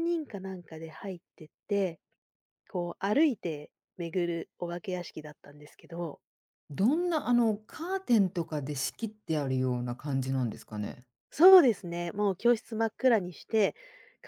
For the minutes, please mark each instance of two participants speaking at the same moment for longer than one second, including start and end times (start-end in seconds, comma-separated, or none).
none